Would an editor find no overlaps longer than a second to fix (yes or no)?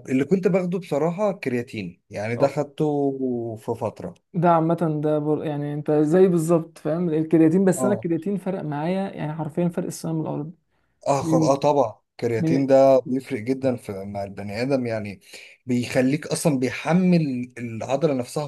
yes